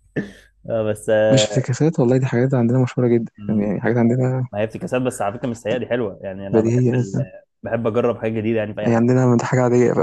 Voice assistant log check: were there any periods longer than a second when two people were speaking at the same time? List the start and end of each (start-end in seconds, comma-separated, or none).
none